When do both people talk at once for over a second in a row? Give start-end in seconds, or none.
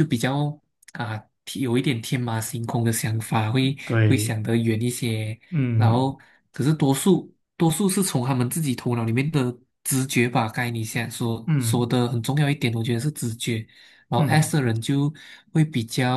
none